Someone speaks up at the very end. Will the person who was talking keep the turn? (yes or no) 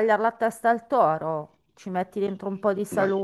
yes